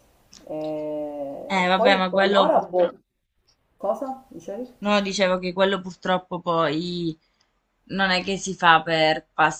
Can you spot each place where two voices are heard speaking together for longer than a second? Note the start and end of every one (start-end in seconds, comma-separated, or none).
1.5-2.9